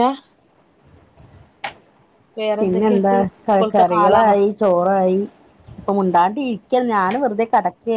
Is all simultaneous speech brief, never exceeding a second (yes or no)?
no